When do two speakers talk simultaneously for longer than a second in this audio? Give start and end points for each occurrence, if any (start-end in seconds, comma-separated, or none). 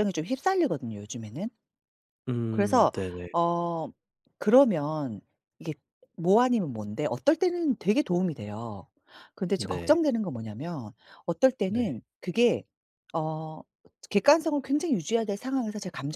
none